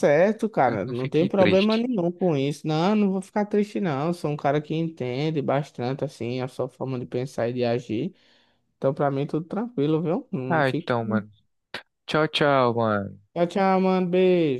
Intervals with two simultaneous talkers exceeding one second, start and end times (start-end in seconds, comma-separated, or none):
0.6-1.9